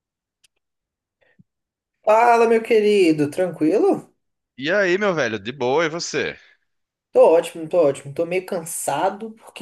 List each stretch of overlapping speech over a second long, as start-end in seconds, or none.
none